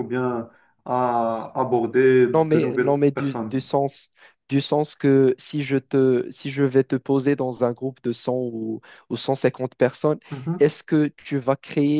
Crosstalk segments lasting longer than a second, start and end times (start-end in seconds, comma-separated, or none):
2.3-3.6